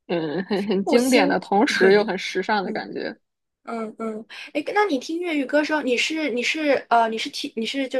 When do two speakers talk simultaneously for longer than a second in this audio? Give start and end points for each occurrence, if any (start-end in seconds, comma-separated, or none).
none